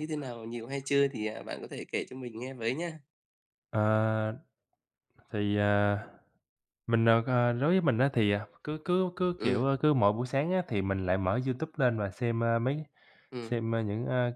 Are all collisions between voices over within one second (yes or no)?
yes